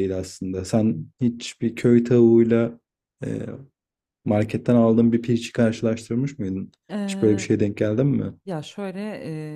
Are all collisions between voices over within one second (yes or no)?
yes